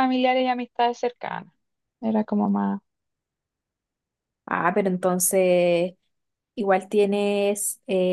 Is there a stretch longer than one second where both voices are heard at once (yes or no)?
no